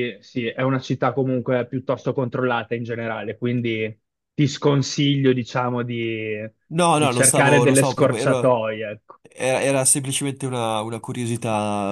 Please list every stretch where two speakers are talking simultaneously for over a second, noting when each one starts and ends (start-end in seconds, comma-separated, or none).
6.9-8.6